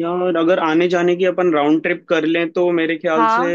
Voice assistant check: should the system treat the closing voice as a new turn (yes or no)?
no